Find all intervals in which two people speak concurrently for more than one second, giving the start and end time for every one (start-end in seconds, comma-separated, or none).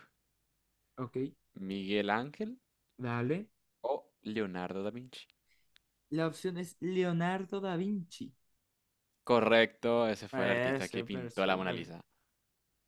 10.3-11.9